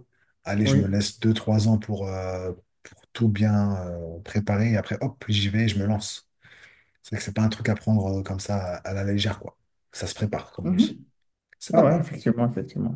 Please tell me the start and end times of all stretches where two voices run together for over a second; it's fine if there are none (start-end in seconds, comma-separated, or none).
none